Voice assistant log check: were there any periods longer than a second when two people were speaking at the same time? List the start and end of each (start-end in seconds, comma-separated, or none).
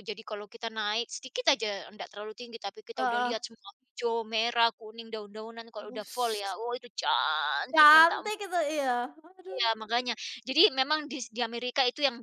none